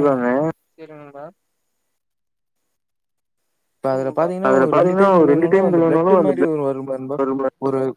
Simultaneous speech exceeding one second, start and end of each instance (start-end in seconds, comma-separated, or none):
4.5-6.3